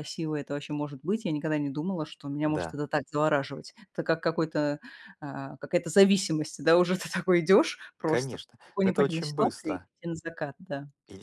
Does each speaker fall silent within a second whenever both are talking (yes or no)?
no